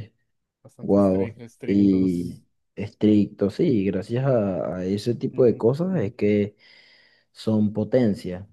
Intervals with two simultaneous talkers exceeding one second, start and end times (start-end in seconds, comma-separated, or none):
0.8-2.4